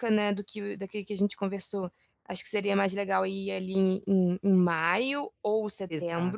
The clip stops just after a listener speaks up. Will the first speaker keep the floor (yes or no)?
no